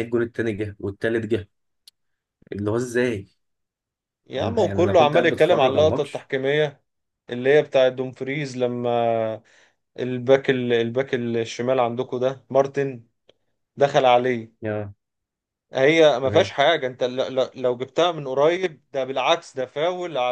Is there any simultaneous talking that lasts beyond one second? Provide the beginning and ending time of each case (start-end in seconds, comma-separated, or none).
4.3-6.3